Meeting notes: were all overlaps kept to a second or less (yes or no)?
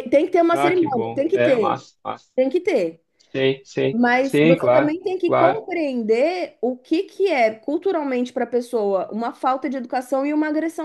no